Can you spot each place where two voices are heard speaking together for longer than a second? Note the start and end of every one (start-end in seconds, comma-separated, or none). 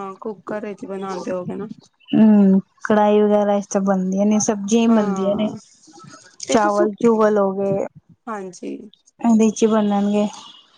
none